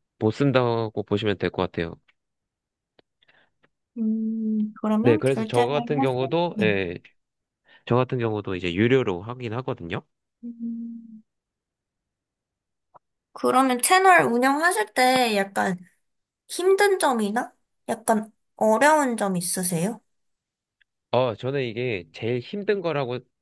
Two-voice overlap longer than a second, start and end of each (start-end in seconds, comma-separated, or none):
5.0-6.7